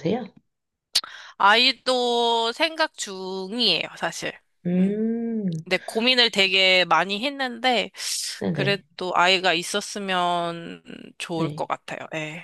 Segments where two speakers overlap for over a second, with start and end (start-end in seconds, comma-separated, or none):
none